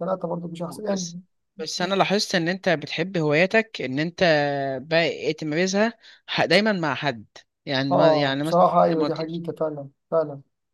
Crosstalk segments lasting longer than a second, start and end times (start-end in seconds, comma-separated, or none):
7.9-9.4